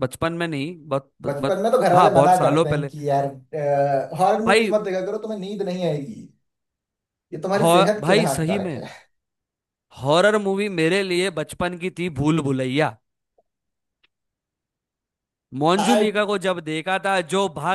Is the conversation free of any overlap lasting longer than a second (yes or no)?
no